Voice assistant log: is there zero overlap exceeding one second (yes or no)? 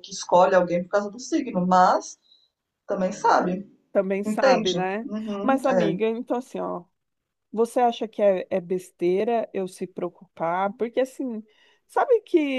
no